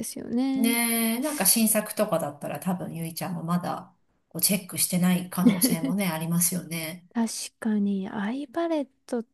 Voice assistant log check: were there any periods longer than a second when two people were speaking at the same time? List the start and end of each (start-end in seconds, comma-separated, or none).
none